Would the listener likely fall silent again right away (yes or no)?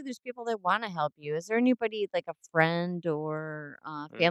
no